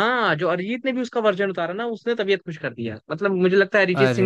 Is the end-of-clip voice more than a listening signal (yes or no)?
no